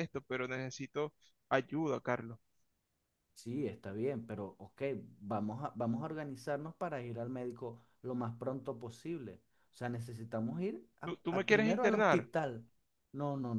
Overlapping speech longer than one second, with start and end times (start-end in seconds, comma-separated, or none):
11.0-12.3